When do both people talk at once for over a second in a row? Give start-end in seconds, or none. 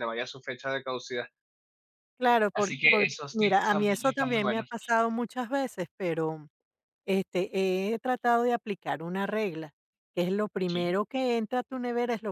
2.5-4.7